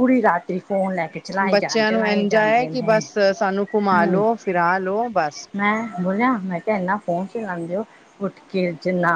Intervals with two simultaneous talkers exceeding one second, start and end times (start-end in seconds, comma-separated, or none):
1.5-3.0